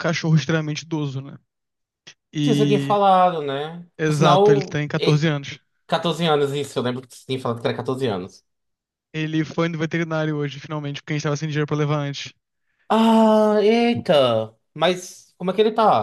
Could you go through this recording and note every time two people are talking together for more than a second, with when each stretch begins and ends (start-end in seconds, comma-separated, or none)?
4.0-5.3